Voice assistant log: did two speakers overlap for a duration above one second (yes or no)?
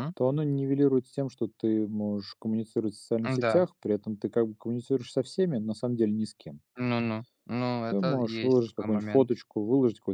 yes